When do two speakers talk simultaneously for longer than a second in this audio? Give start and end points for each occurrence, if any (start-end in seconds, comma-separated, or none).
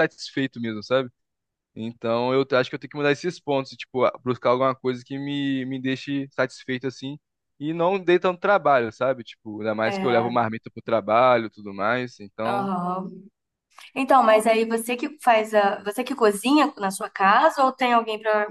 none